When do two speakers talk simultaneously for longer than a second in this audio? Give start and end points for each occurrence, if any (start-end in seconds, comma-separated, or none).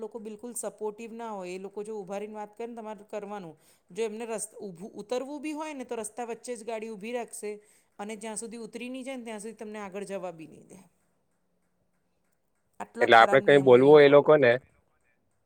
13.0-14.5